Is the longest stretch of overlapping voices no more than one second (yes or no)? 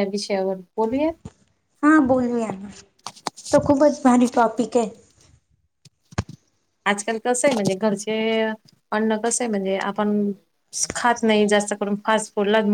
yes